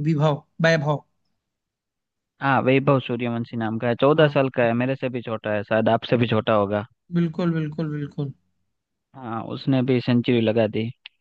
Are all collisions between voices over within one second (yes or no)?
yes